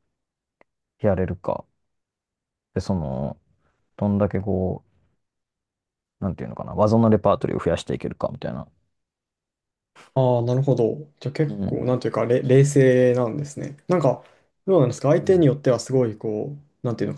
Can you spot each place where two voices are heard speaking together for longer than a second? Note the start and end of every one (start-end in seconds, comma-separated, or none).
none